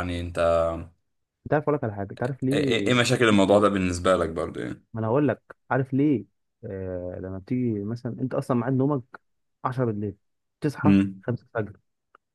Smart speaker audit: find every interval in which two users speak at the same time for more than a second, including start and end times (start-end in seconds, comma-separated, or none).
none